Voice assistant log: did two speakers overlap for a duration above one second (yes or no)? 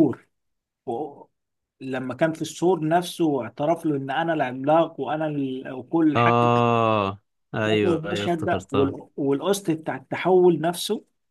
yes